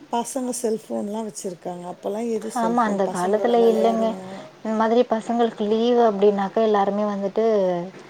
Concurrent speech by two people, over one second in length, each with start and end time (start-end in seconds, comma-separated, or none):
none